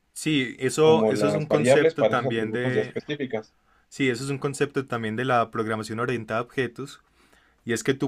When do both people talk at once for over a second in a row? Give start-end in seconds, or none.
0.8-2.9